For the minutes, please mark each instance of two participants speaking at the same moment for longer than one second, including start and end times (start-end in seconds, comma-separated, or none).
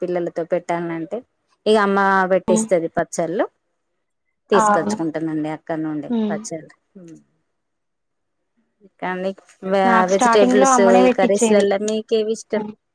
10.1-11.6